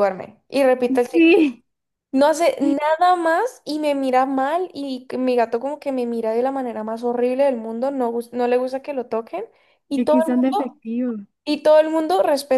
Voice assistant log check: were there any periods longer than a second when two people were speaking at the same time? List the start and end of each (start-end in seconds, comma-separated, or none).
none